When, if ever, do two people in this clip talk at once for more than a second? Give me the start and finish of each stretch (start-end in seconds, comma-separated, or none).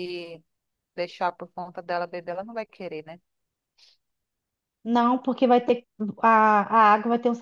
none